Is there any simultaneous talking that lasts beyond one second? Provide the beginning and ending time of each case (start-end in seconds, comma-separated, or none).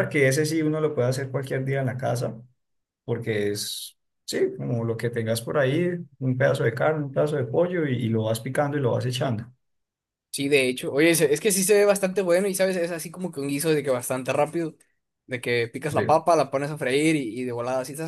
none